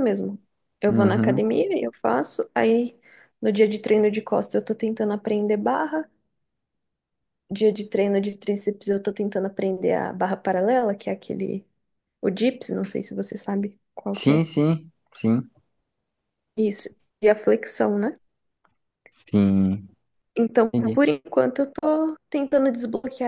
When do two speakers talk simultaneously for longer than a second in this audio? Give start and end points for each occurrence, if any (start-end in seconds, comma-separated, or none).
none